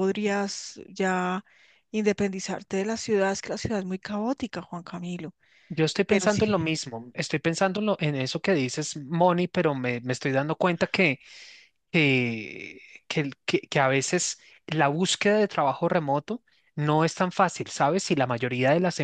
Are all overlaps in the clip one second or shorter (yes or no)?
yes